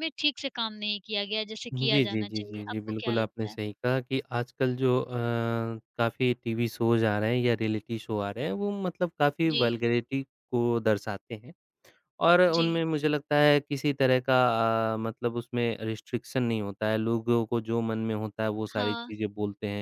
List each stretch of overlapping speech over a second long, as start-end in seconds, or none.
1.7-3.5